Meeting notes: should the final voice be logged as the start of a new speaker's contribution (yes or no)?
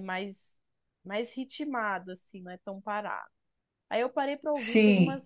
no